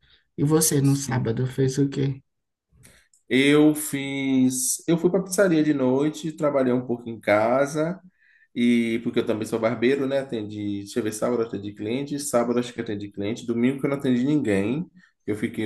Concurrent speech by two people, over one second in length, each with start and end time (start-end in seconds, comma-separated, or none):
none